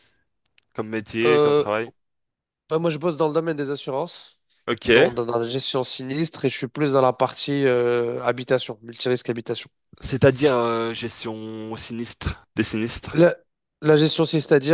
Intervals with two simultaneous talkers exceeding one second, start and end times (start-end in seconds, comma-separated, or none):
none